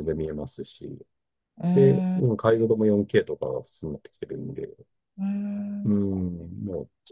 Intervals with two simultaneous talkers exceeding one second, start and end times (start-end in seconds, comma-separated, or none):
none